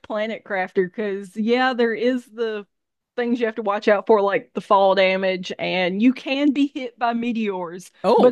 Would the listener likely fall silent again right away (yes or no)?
yes